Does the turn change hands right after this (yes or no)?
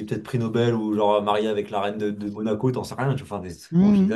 yes